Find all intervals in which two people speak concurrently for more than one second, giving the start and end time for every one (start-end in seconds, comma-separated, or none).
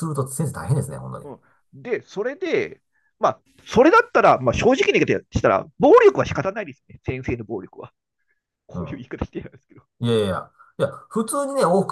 none